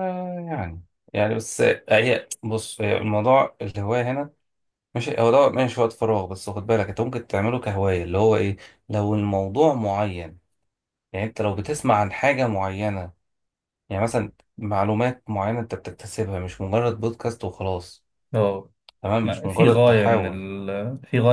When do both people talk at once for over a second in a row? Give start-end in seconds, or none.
19.2-20.5